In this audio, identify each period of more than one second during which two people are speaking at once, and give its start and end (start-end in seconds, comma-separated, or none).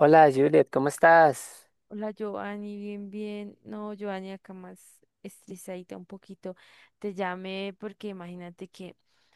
none